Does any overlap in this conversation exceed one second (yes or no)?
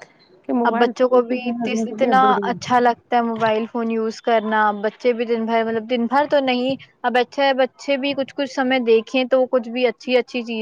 yes